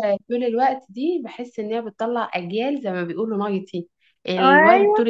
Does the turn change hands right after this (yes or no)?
no